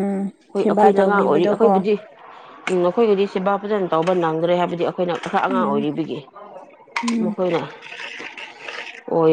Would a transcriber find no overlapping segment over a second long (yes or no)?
no